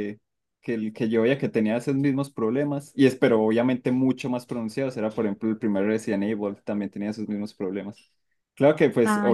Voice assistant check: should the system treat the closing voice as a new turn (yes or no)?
no